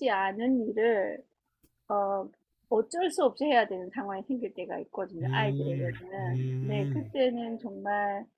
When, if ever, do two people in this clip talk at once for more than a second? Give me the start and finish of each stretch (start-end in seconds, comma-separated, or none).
5.2-7.1